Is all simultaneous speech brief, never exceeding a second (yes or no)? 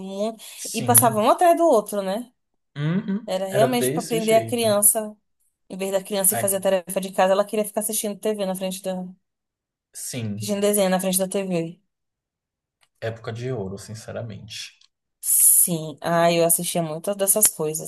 no